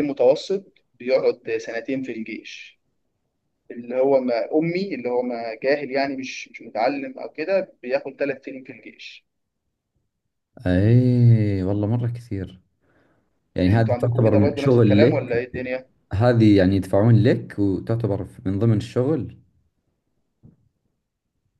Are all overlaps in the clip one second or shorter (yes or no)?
no